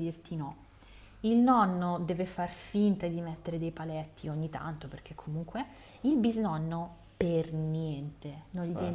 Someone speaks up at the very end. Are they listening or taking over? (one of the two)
listening